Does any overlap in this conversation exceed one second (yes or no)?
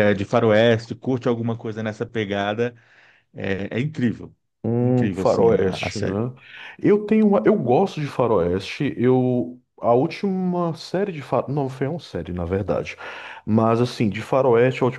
yes